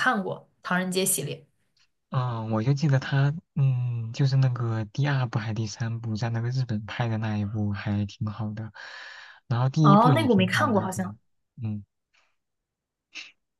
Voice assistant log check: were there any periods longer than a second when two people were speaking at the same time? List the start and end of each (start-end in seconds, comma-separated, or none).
9.8-11.2